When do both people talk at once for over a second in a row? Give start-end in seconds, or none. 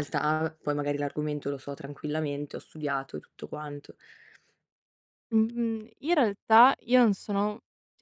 none